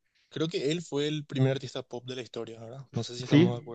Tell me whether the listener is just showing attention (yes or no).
no